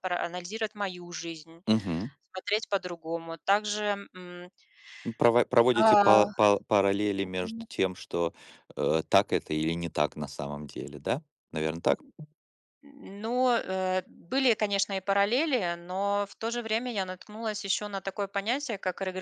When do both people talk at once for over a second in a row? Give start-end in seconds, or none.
none